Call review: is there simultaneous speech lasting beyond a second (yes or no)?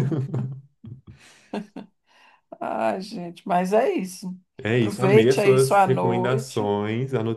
yes